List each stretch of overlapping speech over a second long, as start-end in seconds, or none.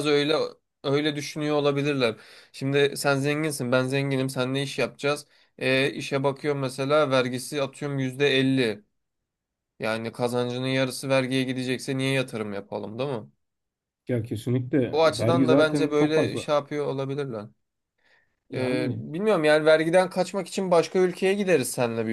14.9-16.4